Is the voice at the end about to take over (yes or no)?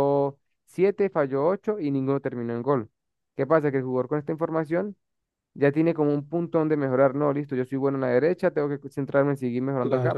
yes